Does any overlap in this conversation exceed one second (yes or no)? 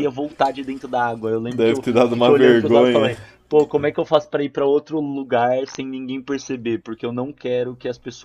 yes